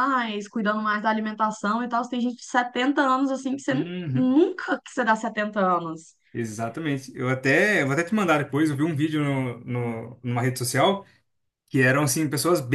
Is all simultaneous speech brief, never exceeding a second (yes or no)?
yes